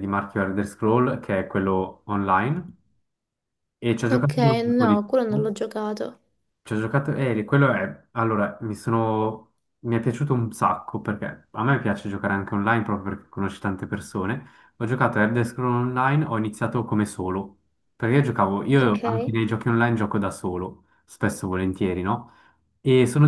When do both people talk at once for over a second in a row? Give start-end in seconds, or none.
4.1-5.5